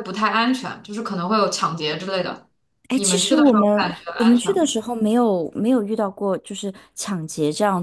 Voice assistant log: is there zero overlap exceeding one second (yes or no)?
no